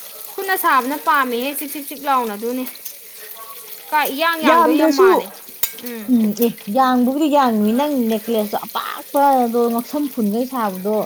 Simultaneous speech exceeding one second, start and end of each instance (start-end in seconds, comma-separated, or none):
none